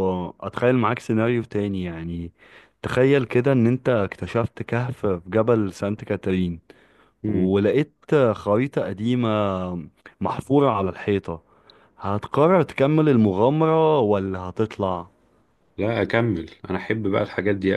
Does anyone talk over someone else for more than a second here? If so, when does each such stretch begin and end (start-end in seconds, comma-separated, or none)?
none